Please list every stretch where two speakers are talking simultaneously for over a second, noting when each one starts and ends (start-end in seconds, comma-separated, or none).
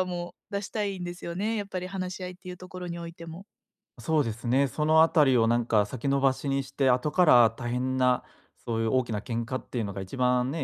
none